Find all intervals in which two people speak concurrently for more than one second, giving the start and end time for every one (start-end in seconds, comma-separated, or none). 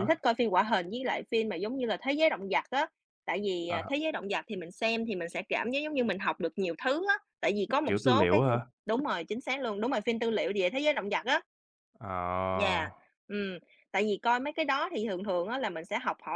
none